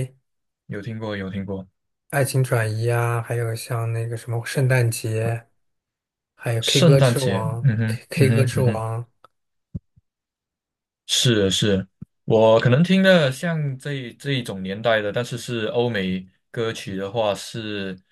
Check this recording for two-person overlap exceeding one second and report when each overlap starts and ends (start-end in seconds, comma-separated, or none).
6.6-8.8